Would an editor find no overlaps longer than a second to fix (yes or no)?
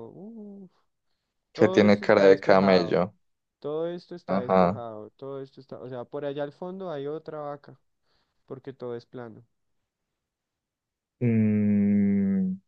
no